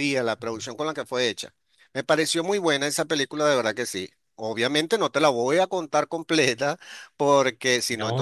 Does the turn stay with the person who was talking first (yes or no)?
no